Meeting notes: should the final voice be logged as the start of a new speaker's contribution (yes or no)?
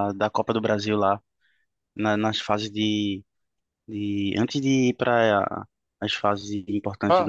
yes